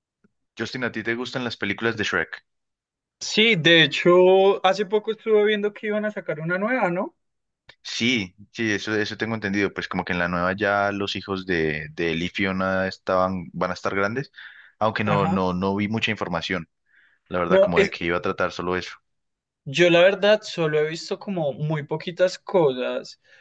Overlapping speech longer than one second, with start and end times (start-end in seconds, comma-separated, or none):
none